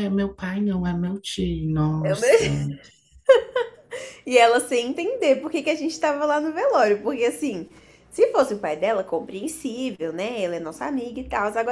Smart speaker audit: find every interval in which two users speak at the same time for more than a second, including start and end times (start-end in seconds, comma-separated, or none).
none